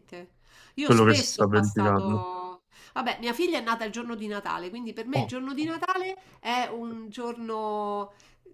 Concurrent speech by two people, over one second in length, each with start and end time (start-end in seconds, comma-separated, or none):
0.8-2.2